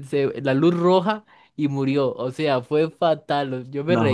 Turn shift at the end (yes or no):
no